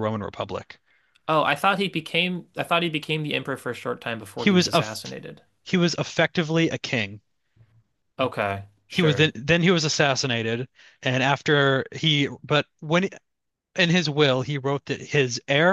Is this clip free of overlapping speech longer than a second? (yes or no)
yes